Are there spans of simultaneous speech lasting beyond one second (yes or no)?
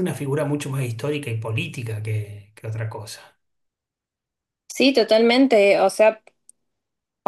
no